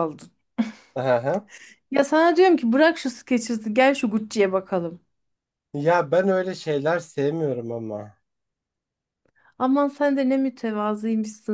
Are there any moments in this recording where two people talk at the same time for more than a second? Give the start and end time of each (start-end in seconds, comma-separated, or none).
none